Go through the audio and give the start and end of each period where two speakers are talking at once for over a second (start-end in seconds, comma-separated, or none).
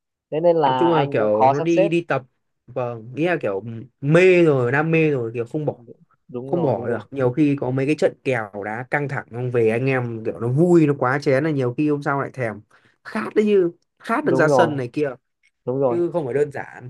0.7-1.9